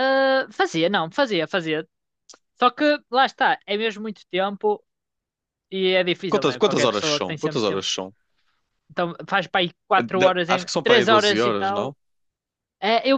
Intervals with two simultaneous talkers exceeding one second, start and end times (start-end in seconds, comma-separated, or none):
6.3-7.8, 10.0-11.9